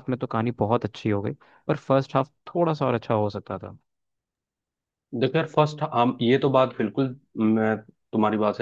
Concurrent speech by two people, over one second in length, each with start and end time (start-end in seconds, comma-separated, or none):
none